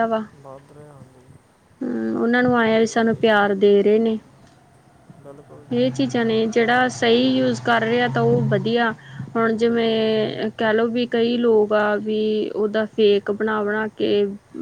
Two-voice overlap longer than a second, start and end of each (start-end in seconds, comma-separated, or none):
none